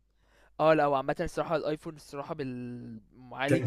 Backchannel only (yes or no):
no